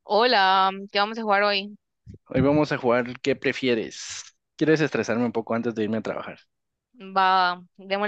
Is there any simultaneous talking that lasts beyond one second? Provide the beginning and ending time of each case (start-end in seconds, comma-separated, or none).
none